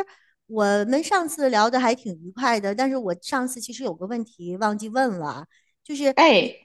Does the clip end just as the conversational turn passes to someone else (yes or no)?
no